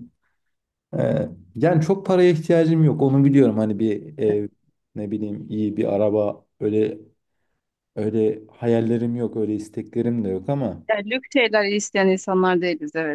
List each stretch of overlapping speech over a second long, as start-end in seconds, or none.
none